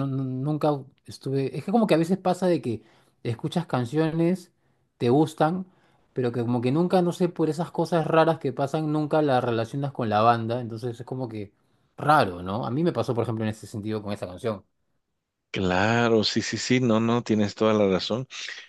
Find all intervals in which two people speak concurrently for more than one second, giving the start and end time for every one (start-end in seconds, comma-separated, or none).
none